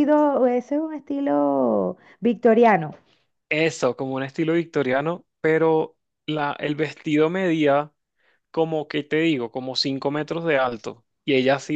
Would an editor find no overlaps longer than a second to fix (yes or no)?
yes